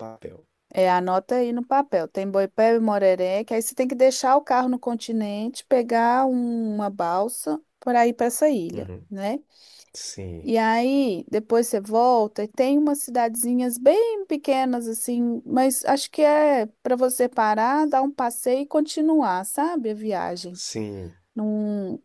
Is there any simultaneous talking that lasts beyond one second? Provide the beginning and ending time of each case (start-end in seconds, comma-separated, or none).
none